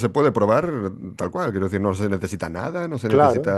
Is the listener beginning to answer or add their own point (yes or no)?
no